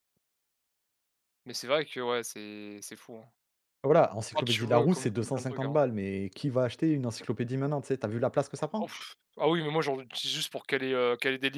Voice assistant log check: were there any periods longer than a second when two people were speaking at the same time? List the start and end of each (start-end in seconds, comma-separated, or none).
4.3-5.8